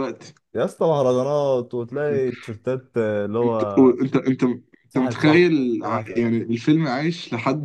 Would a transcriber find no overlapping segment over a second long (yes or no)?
no